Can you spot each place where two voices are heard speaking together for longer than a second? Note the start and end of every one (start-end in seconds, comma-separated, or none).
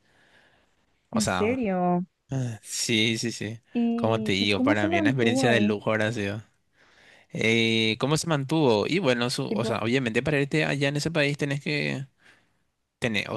4.0-5.8